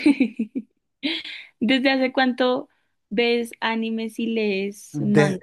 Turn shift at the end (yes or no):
yes